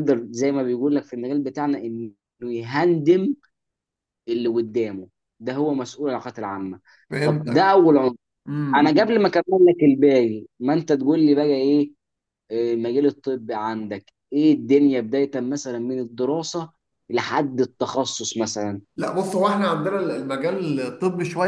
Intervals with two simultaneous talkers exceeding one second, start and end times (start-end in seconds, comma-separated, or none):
none